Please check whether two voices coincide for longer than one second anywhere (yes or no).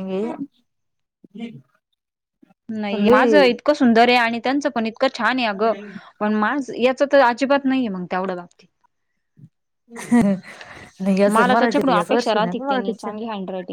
yes